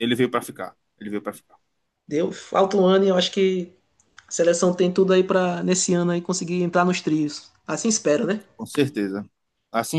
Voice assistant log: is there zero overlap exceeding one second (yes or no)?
yes